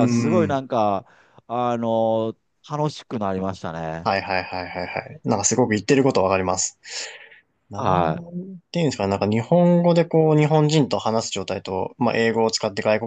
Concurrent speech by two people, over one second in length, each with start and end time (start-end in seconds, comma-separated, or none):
none